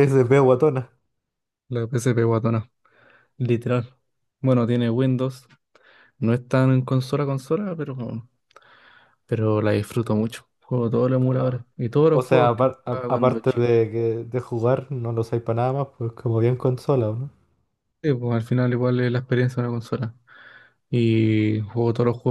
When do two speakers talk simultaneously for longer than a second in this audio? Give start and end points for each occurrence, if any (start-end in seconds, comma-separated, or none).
12.1-13.7